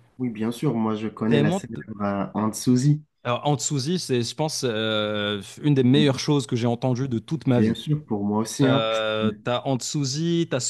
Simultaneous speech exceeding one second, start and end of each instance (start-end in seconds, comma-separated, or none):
none